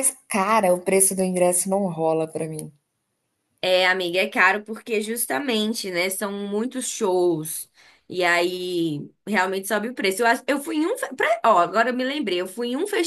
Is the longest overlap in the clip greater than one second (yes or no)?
no